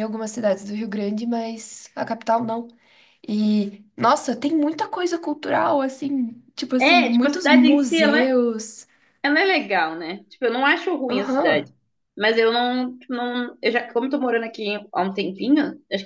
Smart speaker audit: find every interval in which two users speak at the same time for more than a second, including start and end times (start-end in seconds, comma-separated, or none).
6.8-8.3